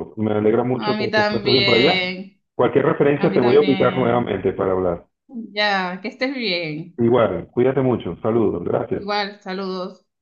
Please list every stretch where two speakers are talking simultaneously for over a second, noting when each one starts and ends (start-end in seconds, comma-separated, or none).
0.8-2.0, 3.2-4.4